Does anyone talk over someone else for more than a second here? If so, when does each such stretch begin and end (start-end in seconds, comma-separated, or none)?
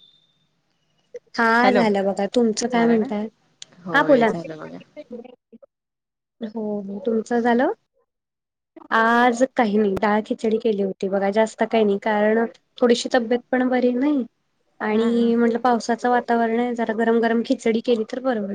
none